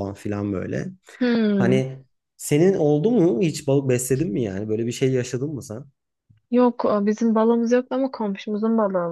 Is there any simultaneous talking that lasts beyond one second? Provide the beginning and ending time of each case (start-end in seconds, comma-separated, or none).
none